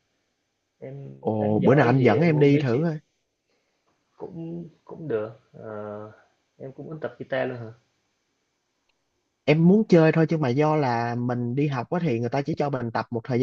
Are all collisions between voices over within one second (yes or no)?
no